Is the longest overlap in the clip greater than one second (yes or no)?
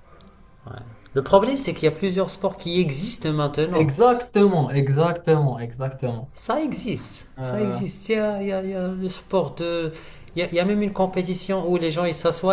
no